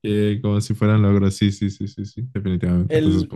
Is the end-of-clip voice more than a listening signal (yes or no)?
yes